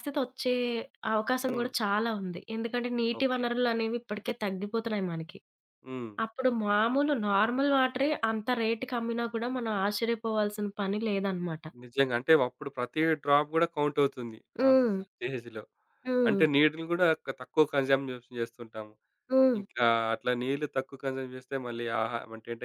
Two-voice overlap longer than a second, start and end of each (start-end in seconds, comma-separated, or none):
none